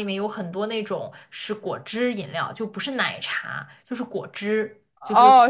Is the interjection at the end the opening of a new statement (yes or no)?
yes